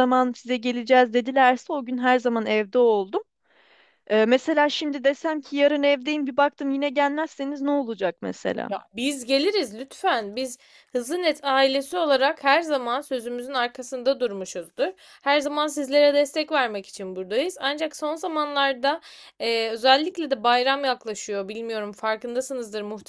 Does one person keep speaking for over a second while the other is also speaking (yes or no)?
no